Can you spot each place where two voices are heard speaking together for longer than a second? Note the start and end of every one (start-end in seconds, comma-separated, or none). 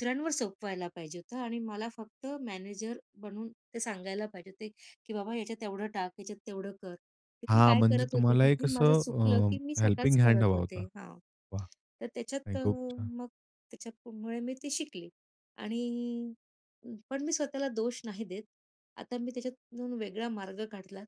7.5-10.8